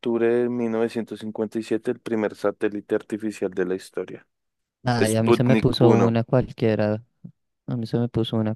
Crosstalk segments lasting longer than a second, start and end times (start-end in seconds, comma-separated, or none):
5.0-6.2